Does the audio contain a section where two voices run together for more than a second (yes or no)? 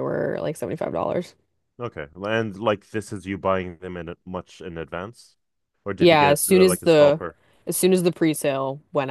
yes